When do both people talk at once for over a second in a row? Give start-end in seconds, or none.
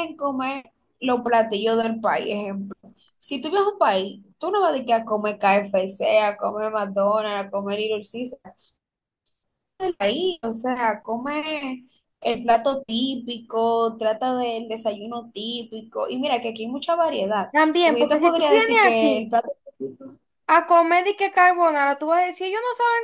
17.5-19.3